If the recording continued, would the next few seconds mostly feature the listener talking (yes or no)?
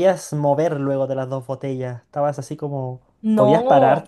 yes